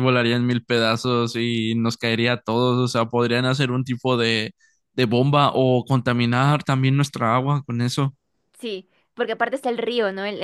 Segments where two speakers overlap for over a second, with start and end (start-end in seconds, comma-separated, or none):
none